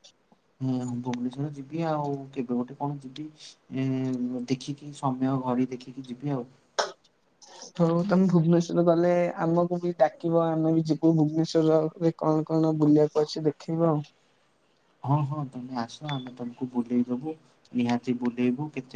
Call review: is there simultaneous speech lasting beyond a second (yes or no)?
no